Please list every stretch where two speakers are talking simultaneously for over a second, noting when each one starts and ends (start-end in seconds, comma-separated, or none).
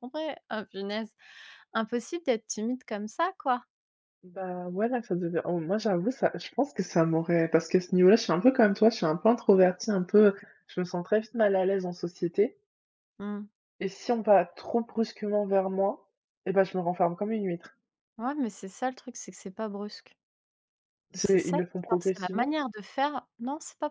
21.1-22.5